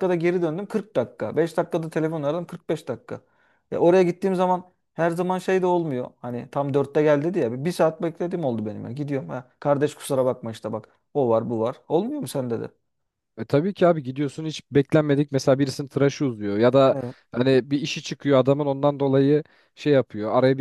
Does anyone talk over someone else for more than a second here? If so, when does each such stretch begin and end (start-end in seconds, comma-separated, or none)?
none